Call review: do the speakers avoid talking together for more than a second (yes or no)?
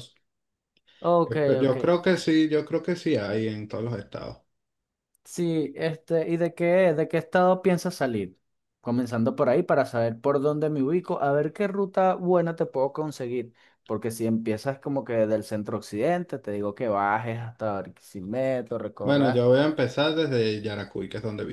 yes